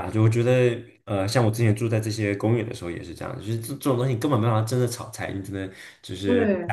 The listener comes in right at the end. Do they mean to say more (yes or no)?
no